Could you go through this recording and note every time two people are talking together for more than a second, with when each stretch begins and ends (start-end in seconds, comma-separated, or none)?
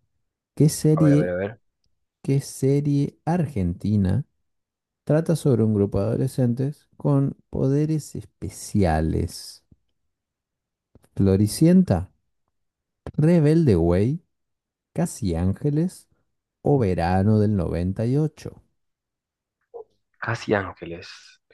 none